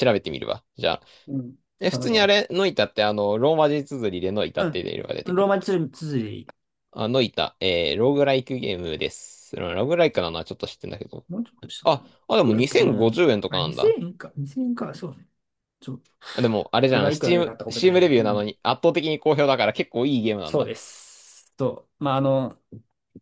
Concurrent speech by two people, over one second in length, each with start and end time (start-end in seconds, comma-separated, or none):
11.8-14.0, 16.9-18.5